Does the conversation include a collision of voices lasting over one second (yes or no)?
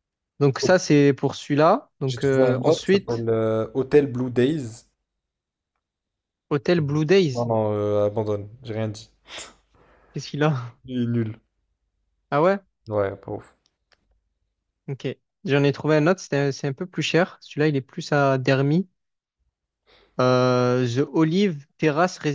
yes